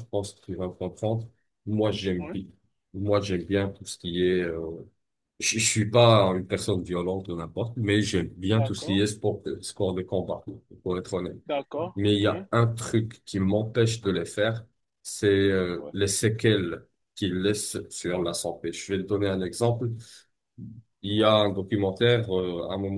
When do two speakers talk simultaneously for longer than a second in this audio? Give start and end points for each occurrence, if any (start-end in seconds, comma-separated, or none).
none